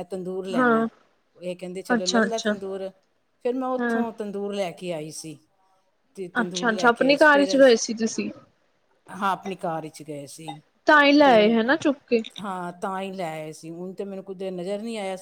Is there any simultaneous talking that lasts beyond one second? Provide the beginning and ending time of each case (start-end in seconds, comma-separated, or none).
none